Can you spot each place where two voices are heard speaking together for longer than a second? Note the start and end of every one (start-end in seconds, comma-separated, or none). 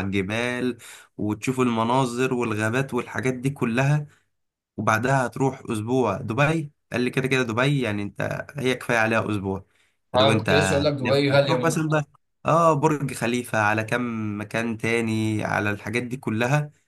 10.2-11.8